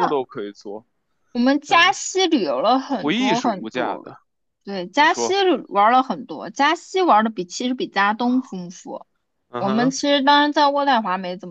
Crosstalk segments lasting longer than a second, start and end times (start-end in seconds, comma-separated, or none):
2.9-4.1